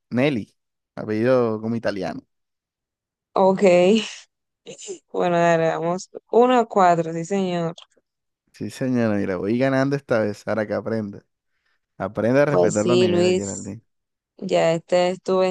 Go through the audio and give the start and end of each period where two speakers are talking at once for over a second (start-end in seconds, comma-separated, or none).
12.5-13.7